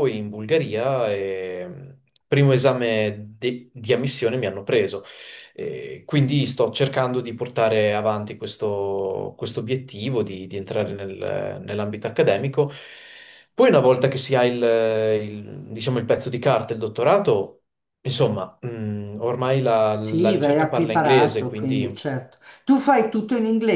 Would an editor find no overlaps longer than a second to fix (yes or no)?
no